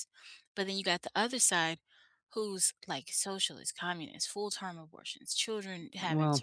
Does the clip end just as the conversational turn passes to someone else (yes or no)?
no